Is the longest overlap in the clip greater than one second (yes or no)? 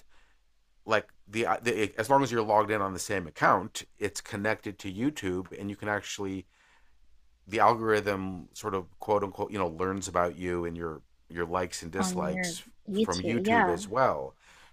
yes